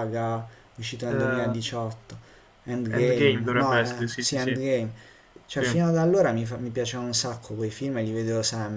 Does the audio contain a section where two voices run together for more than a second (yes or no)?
yes